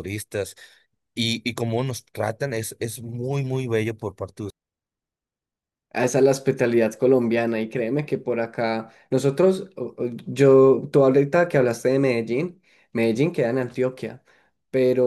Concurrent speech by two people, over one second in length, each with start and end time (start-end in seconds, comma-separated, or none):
none